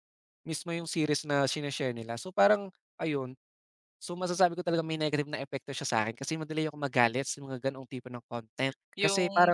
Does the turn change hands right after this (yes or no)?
yes